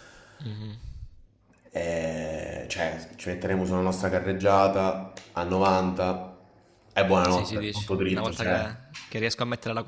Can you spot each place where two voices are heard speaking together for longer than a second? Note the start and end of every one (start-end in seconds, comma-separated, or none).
7.3-8.6